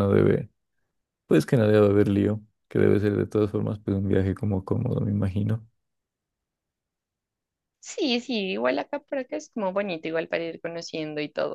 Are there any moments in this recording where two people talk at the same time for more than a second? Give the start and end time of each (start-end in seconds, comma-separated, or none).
none